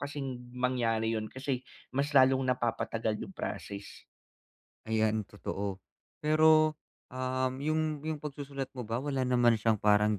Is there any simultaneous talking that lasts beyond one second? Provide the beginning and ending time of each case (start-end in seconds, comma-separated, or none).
none